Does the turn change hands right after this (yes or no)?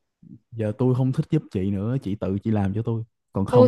yes